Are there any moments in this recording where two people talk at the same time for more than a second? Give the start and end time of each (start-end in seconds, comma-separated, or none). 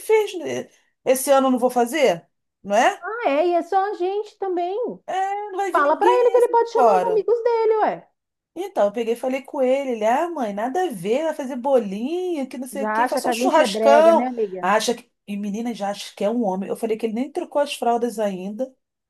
5.7-7.3, 12.7-14.7